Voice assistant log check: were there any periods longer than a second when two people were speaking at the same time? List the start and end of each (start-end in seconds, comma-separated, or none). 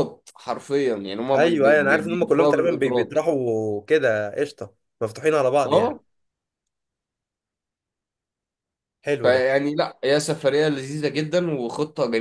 1.3-3.2